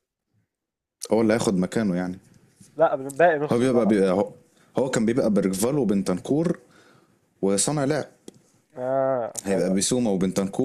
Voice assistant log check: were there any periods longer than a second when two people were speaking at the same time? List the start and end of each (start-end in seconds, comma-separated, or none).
none